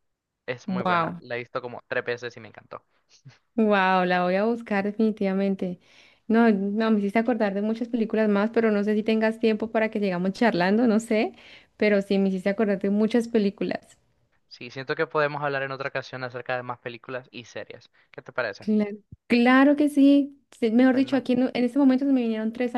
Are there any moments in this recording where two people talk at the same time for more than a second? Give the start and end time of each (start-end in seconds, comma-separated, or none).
none